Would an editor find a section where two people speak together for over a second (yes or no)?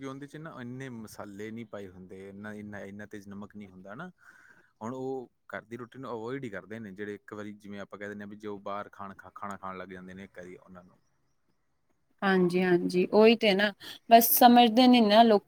no